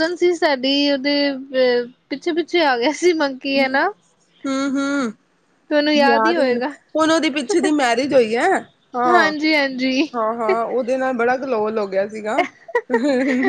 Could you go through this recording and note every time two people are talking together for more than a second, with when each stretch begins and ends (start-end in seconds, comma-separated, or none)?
none